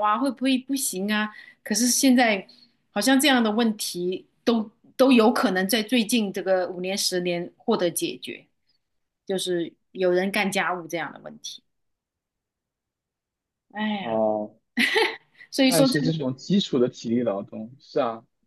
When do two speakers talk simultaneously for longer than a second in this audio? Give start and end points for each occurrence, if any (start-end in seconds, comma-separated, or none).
none